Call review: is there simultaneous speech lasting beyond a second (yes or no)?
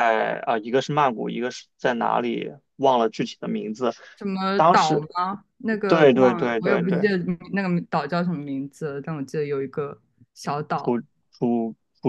yes